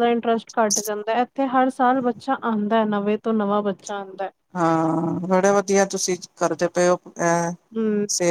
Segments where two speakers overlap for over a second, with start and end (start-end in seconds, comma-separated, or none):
none